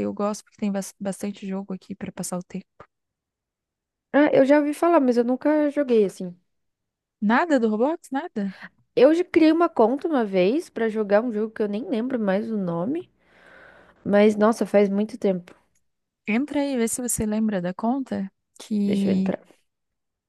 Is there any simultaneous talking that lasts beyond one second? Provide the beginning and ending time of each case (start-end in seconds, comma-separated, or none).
none